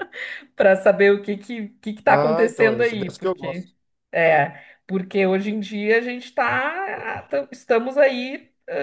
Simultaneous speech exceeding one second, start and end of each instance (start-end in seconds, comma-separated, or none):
2.1-3.7